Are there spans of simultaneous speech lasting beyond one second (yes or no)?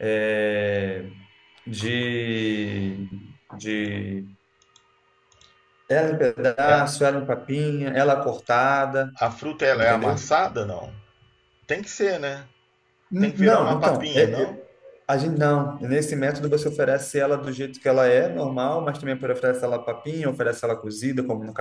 yes